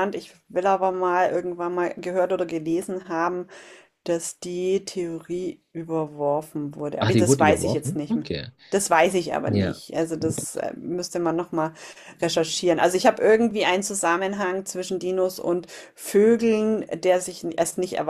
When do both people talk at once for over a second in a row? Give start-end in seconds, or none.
7.0-8.3